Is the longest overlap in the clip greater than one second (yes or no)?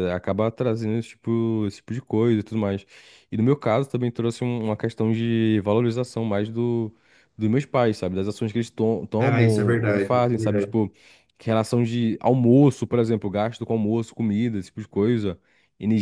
yes